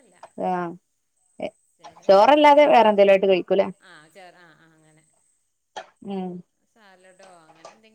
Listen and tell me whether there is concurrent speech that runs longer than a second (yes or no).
yes